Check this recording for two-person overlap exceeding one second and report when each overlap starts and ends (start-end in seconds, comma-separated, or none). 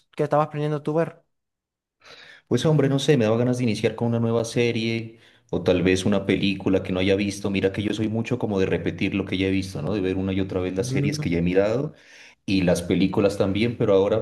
none